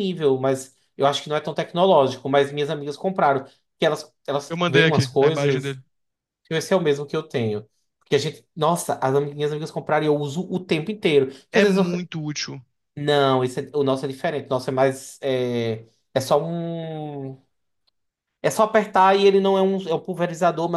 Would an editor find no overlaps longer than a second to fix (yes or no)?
no